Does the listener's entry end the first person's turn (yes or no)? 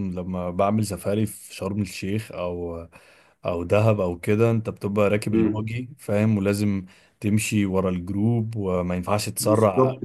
yes